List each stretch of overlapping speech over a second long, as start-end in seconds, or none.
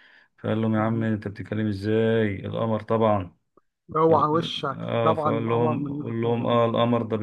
4.1-6.6